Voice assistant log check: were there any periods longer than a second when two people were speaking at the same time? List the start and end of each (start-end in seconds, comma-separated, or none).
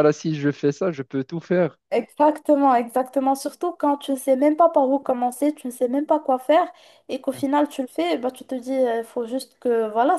none